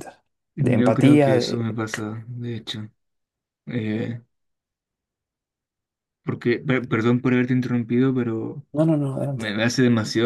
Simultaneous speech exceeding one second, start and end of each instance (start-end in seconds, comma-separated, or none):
0.6-1.8